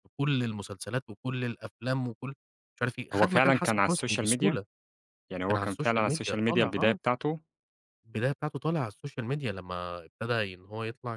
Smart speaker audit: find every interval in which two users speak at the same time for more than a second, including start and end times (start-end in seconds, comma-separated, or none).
3.1-4.6, 5.5-7.0